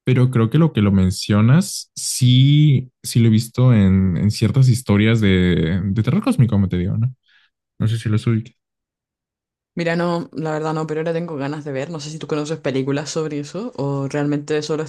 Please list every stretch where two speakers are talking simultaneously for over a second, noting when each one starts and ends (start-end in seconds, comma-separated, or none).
none